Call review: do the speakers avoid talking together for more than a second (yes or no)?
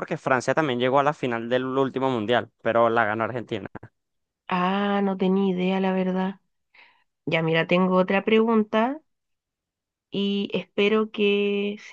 yes